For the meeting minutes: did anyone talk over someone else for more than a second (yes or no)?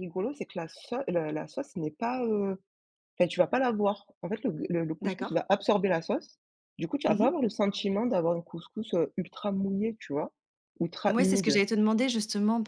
no